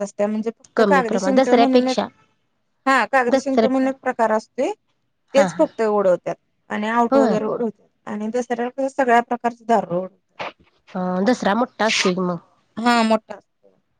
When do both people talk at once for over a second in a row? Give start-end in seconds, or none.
0.8-2.0